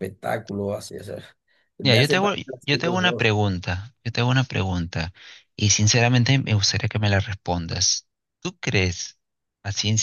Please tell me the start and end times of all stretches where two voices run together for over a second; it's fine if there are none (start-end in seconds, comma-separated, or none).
1.8-3.3